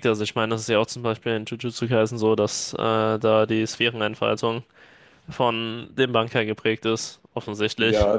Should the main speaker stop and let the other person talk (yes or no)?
yes